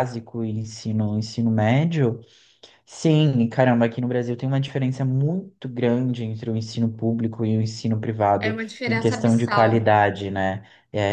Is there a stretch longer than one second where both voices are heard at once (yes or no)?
yes